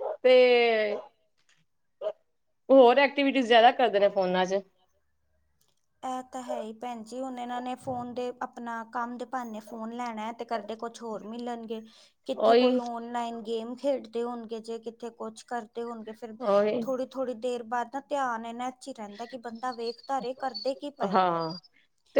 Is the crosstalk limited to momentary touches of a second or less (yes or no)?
yes